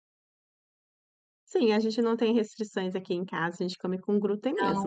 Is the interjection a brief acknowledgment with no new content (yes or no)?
no